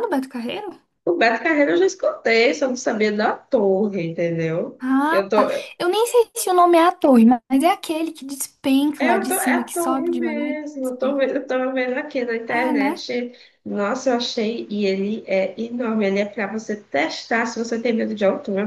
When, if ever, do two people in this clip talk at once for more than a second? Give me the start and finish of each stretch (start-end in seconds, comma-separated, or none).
9.0-11.2